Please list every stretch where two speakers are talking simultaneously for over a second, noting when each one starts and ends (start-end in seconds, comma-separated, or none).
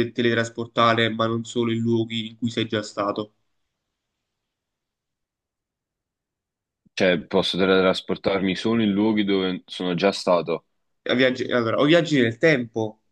none